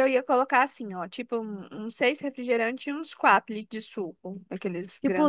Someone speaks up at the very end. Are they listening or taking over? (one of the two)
taking over